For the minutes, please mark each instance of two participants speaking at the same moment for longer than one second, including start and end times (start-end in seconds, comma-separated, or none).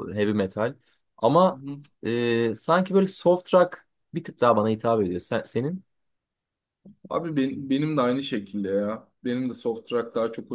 none